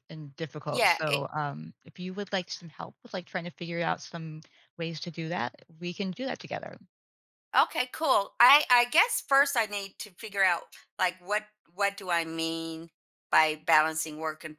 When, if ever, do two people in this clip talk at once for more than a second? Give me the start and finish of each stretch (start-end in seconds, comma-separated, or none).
none